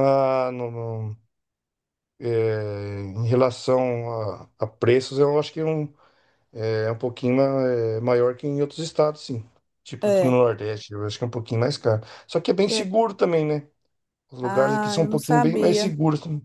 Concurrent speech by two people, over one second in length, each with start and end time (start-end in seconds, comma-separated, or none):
14.4-15.9